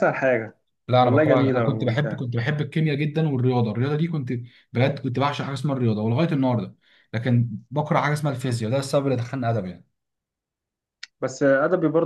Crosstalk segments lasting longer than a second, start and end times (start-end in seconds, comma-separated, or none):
1.0-2.2